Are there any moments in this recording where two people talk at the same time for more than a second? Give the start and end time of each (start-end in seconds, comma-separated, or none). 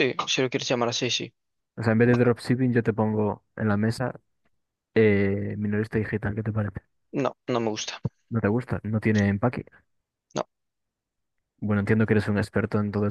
none